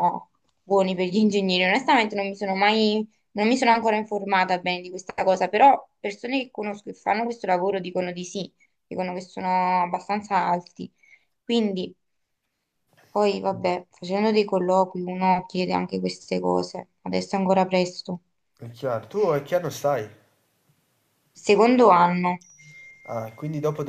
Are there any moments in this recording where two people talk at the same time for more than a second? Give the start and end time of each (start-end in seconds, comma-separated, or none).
none